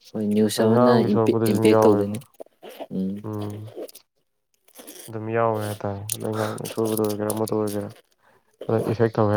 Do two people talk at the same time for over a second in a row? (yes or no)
yes